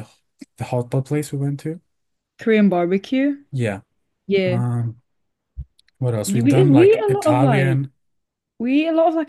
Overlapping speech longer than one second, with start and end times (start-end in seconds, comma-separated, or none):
6.3-7.8